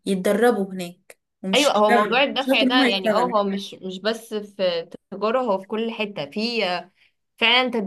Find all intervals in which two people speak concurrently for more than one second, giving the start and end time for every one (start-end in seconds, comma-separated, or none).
1.5-3.3